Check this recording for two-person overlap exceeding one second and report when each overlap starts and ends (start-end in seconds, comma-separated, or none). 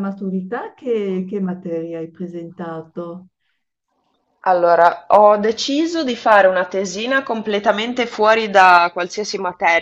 none